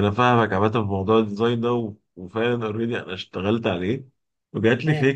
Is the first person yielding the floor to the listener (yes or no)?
no